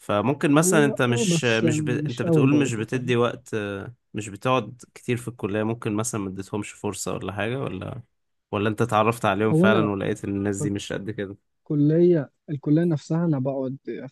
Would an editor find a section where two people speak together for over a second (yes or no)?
yes